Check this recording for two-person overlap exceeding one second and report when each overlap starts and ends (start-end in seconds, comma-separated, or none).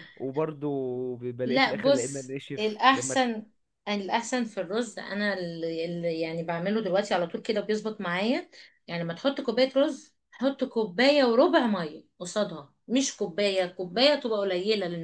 1.4-3.2